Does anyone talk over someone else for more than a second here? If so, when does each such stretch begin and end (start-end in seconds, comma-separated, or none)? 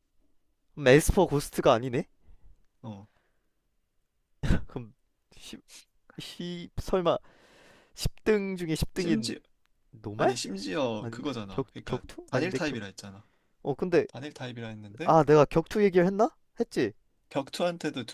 11.0-12.8